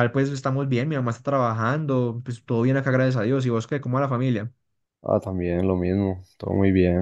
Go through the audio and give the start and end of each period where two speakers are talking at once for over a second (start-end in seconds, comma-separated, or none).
none